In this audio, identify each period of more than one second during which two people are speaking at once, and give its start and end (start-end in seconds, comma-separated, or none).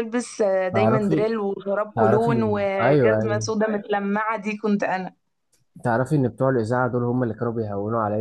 1.9-3.5